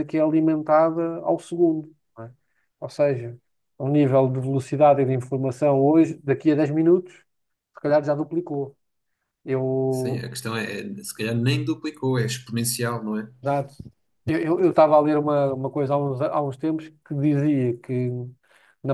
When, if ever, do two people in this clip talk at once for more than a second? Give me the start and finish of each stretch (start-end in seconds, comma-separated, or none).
none